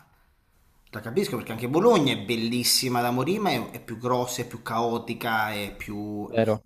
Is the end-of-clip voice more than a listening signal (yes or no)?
yes